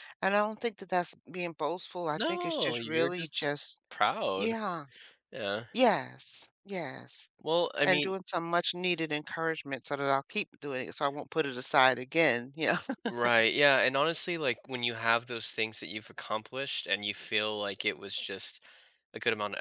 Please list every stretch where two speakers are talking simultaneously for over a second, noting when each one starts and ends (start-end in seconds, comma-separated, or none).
2.2-3.5